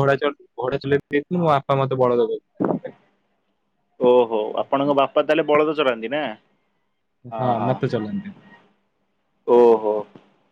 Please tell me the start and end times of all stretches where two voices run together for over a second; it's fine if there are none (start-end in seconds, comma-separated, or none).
none